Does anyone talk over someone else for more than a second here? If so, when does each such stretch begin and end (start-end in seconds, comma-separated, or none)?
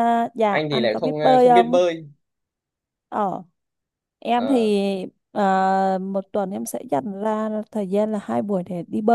0.5-1.8